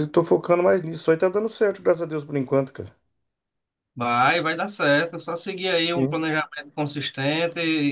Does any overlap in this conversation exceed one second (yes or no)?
no